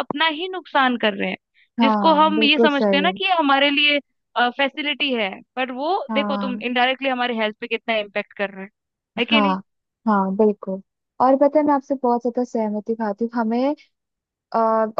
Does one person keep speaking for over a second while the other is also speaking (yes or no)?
yes